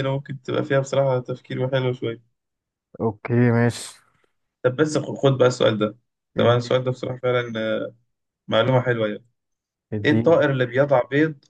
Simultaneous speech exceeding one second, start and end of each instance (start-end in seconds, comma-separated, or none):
none